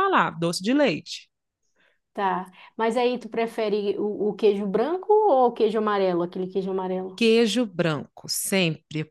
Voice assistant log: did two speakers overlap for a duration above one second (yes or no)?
no